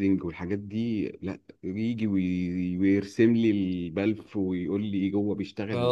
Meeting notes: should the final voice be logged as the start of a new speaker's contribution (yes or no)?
yes